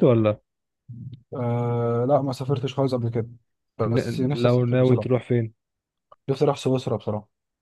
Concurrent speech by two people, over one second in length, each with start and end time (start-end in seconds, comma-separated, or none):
3.9-5.2